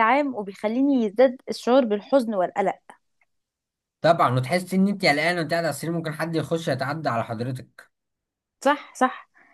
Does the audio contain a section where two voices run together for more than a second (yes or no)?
no